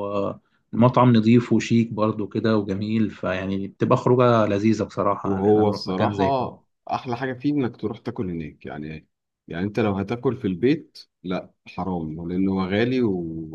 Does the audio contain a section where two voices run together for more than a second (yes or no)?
yes